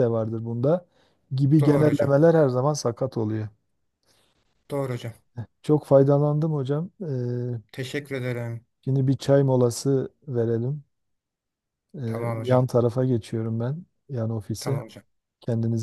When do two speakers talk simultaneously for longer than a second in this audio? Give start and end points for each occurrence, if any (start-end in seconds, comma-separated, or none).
none